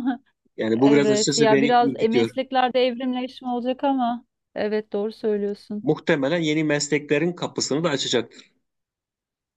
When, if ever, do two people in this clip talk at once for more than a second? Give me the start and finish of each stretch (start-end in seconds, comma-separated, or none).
0.7-2.3